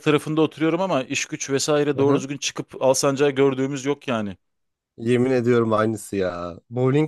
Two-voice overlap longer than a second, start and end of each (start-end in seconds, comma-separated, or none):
none